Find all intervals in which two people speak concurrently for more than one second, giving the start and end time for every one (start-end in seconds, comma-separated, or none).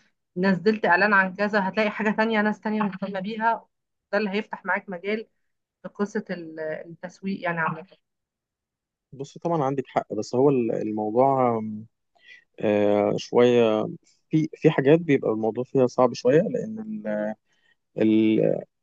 none